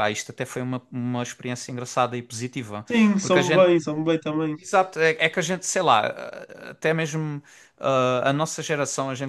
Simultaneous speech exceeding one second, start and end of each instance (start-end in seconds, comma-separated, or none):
none